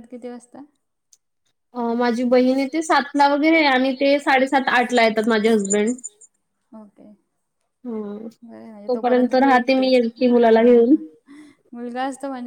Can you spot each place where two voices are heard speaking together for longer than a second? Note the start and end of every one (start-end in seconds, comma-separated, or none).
9.4-10.9